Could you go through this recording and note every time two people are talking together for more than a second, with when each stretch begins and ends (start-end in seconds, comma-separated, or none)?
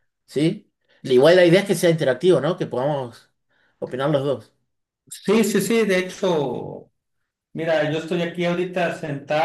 none